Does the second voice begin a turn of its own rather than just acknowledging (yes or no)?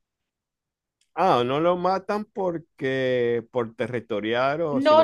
yes